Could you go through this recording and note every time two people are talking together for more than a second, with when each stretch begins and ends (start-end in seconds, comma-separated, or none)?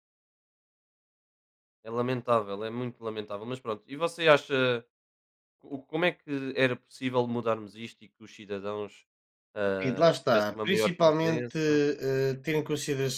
9.8-11.8